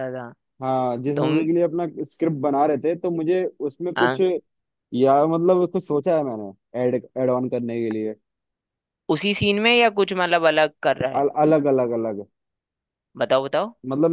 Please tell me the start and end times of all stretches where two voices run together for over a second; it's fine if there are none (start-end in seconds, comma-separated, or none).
none